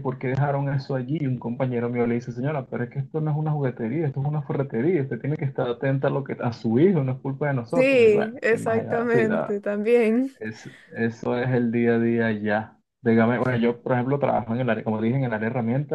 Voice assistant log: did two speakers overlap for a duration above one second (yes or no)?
yes